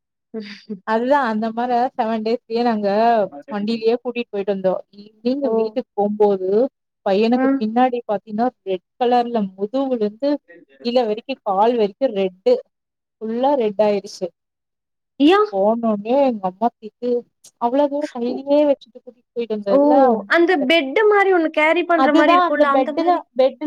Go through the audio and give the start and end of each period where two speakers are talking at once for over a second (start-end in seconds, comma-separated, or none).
none